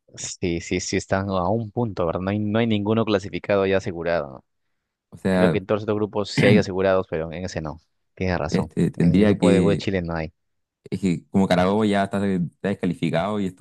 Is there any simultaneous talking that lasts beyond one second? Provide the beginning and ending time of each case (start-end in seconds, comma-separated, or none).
8.5-9.8